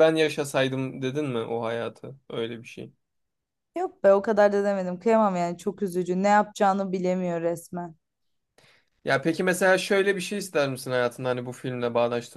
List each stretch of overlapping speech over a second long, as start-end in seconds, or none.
none